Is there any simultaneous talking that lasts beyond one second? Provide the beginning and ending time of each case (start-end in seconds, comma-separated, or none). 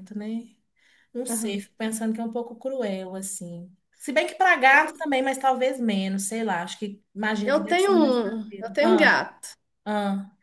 7.4-9.1